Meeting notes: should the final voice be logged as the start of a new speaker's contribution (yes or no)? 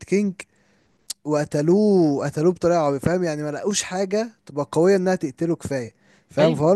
no